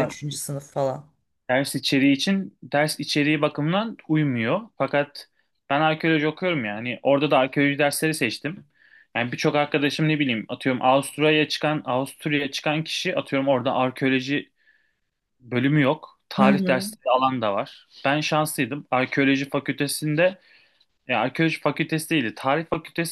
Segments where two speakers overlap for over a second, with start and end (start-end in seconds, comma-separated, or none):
none